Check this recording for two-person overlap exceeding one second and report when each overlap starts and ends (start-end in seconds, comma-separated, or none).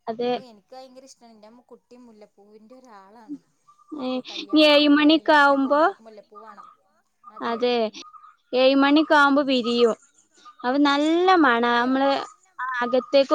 4.1-5.8